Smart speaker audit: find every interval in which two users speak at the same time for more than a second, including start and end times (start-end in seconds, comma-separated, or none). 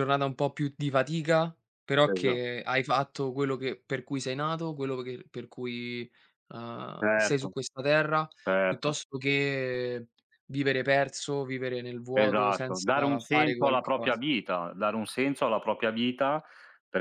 12.1-14.2